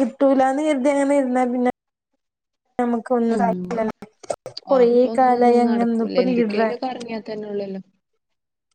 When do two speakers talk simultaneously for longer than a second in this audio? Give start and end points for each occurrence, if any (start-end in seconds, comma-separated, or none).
4.8-6.7